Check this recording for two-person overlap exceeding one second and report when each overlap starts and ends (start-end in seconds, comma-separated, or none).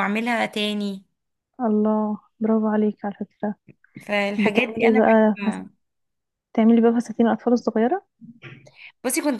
4.4-5.6